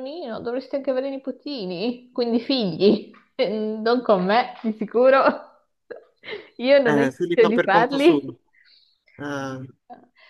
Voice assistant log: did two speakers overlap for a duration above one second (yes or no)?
yes